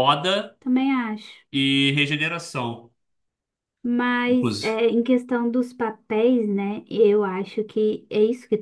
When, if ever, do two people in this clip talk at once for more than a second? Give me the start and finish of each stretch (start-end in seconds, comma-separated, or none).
none